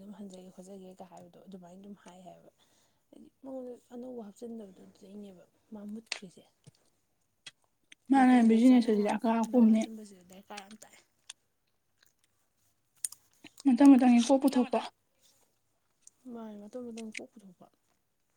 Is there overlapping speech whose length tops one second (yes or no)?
yes